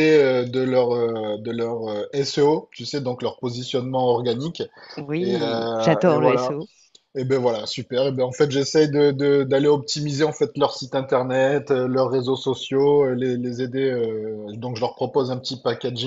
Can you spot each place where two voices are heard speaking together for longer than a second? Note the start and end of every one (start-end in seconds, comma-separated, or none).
5.2-6.5